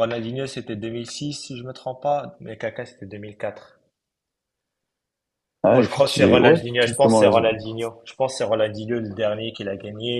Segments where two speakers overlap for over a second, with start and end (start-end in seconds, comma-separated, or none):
5.7-7.5